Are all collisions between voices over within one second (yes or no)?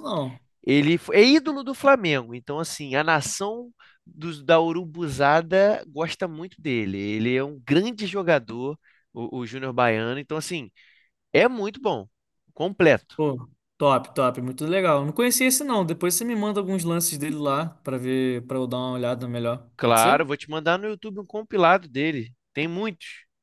yes